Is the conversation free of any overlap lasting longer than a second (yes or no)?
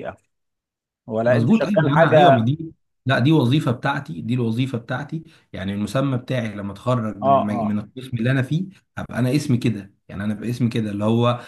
no